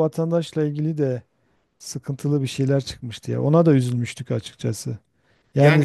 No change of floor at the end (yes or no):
yes